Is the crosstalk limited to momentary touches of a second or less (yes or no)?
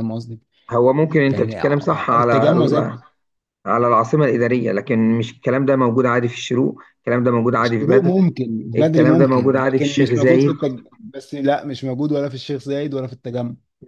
no